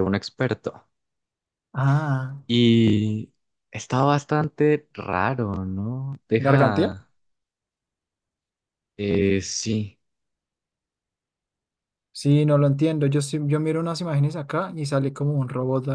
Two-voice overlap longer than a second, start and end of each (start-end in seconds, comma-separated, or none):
none